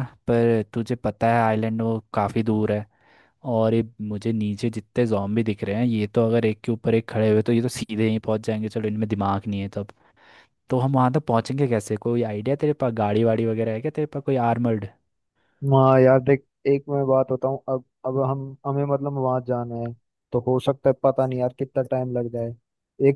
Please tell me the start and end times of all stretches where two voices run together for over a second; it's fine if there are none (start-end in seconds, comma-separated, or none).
none